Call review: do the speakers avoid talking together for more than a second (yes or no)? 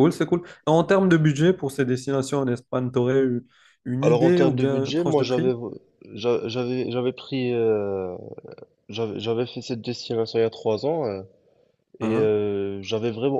no